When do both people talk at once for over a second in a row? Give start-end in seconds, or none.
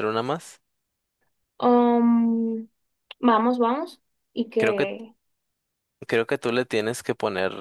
none